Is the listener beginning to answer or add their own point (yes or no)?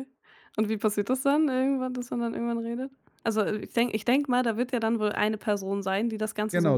yes